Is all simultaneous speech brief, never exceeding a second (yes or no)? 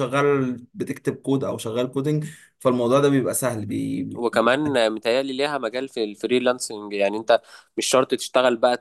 yes